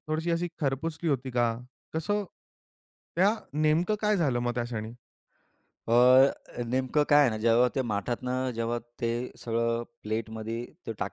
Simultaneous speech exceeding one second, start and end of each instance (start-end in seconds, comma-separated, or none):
none